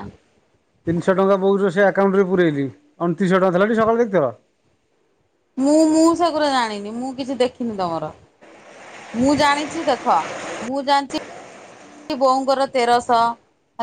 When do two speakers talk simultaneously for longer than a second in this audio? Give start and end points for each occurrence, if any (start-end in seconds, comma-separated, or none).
none